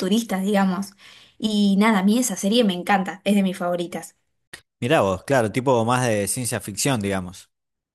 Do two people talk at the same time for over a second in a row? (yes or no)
no